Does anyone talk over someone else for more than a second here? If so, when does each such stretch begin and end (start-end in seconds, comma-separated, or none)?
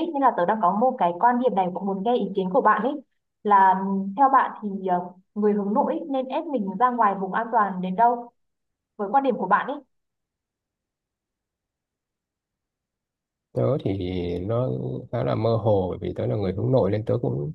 none